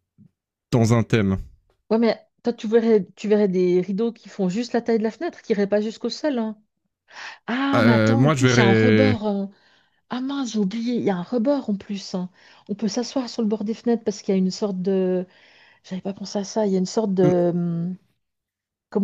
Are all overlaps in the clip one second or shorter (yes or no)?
no